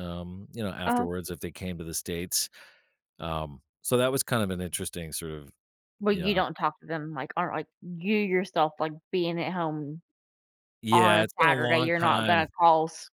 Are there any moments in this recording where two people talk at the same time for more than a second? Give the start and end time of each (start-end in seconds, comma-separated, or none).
10.9-12.5